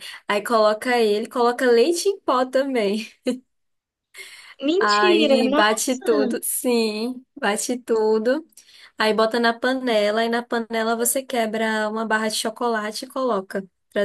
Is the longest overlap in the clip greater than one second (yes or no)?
yes